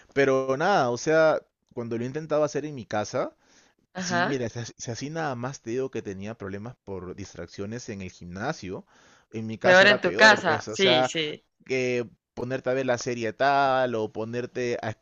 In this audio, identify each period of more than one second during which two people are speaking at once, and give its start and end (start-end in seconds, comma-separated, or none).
9.6-11.1